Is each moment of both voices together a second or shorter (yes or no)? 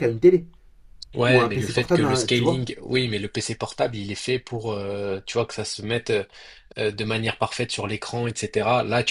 no